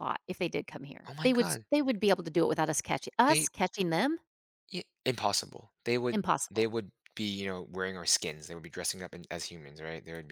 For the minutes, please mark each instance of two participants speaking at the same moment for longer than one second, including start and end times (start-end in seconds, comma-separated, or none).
none